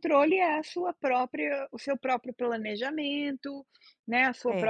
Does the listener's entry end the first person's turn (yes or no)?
no